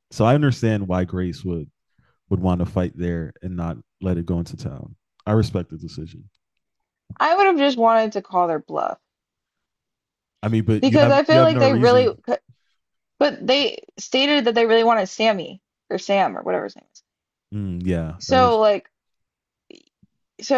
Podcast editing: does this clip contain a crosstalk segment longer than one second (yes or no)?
yes